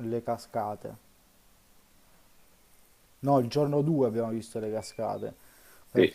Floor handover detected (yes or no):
no